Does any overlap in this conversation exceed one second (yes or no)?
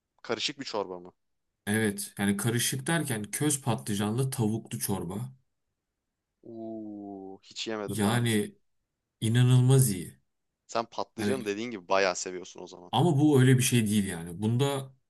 no